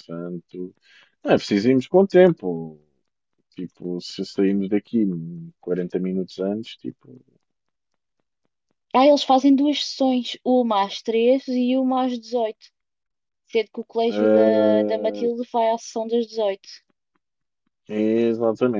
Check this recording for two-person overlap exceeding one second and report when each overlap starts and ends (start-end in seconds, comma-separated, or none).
14.1-15.3